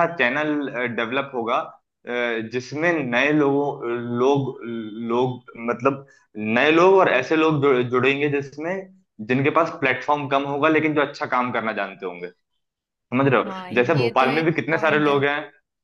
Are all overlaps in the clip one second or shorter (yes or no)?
no